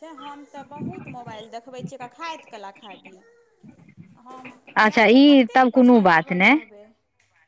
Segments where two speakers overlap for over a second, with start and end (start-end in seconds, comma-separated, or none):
4.8-6.6